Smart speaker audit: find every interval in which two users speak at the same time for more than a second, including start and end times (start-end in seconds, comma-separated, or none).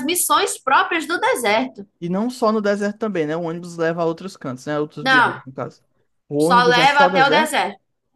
6.4-7.6